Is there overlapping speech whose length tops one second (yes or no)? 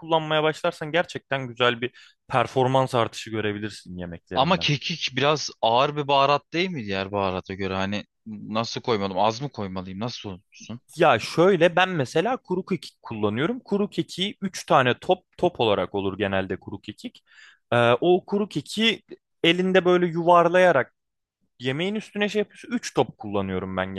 no